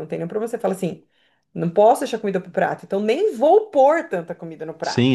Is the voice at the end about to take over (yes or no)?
yes